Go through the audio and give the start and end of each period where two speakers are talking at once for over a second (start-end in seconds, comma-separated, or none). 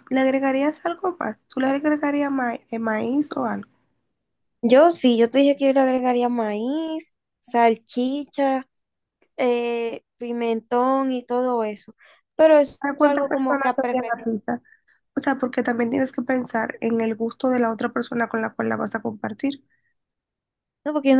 12.8-14.3